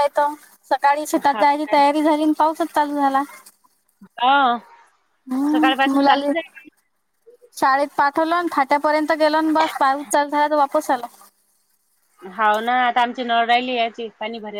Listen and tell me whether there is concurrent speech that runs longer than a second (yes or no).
no